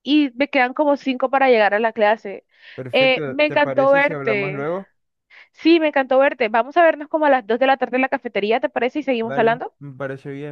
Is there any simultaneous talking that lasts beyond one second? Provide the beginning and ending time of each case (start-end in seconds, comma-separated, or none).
2.9-4.7